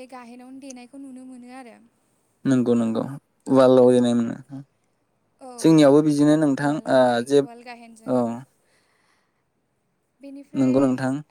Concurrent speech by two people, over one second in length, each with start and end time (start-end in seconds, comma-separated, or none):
6.6-8.1